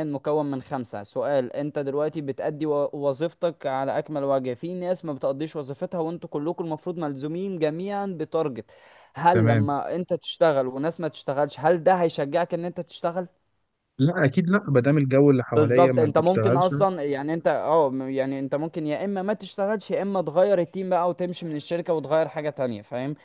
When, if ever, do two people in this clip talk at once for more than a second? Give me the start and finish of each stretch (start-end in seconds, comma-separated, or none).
15.5-16.7